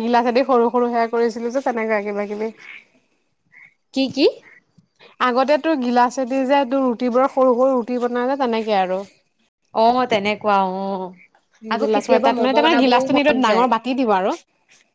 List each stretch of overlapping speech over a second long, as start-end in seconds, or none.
11.8-13.7